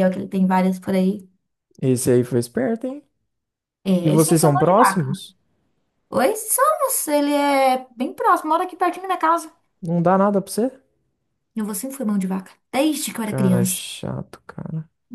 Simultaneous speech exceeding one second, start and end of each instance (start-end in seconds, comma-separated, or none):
4.0-5.2